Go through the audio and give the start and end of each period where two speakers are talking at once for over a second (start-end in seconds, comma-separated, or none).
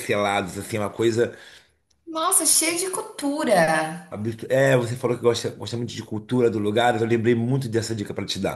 none